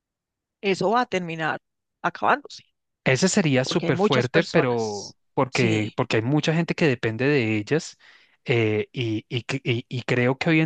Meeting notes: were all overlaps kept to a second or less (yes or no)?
no